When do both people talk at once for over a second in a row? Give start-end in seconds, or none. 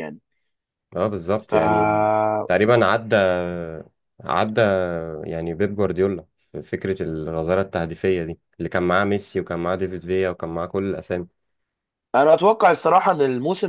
none